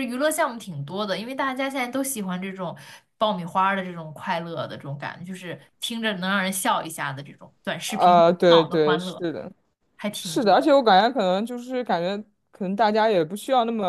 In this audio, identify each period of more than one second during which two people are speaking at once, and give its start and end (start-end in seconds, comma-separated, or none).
7.8-9.2